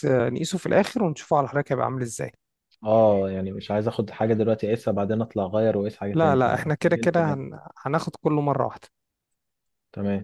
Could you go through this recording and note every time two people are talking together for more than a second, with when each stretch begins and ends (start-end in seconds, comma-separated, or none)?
6.1-7.4